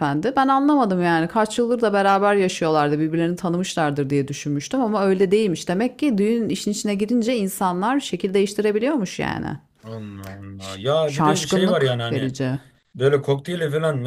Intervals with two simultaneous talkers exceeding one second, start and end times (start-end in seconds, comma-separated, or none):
10.6-12.3